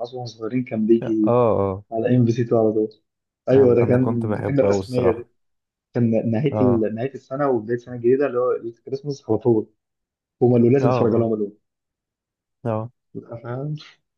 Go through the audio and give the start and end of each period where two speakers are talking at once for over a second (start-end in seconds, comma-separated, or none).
3.5-5.3